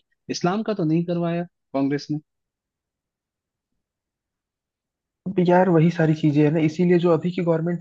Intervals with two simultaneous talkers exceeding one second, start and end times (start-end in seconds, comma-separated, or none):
none